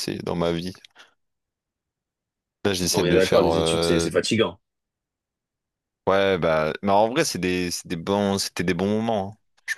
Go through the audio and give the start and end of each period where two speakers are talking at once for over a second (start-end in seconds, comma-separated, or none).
2.9-4.1